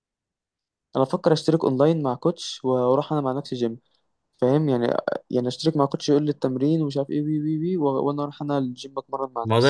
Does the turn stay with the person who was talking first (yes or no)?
no